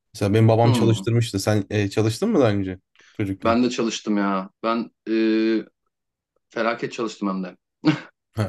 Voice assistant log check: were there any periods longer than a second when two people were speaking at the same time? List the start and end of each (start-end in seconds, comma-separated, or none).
none